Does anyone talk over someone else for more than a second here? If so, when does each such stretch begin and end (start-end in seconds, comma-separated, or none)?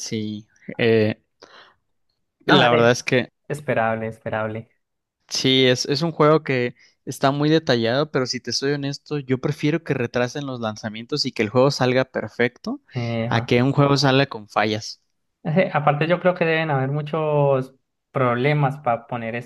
none